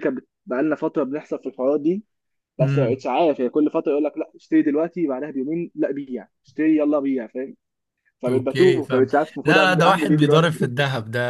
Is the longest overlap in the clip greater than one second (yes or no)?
yes